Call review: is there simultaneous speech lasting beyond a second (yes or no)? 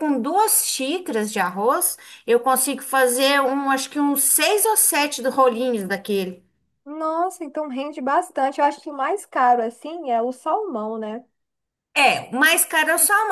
no